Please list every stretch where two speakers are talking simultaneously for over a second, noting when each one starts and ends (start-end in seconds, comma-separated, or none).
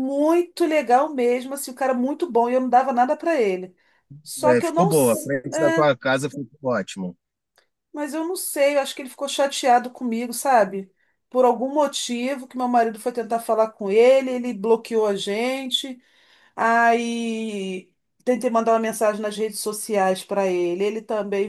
4.5-5.8